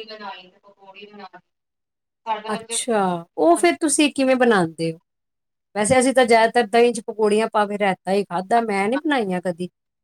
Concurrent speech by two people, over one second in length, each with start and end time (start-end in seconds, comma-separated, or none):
none